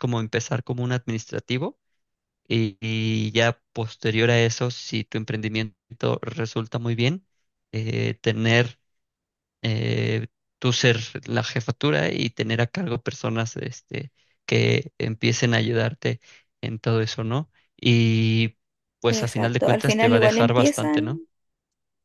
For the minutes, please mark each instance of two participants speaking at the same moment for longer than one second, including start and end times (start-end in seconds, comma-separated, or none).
19.1-21.1